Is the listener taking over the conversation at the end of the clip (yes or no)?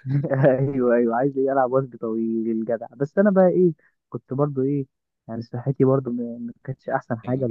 no